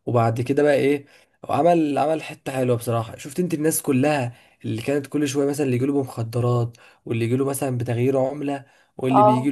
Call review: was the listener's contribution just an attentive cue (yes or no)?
yes